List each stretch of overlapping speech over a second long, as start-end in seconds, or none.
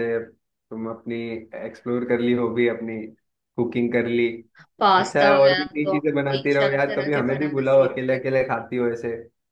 5.0-8.2